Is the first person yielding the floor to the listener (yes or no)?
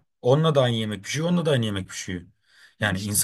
no